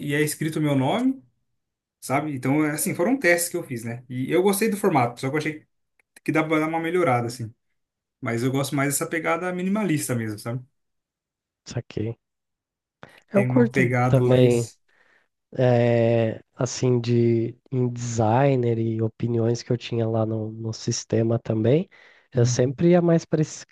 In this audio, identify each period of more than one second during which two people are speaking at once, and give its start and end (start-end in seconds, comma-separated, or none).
13.3-14.7